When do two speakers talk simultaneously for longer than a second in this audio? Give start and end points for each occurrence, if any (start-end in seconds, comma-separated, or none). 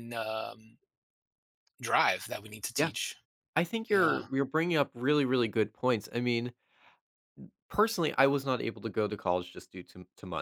none